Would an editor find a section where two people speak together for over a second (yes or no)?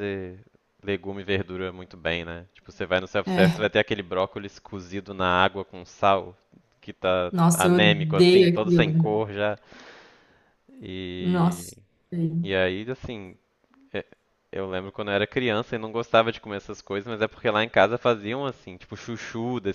yes